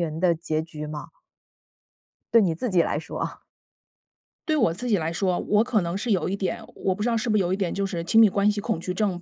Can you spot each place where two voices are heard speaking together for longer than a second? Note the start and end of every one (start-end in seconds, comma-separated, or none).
none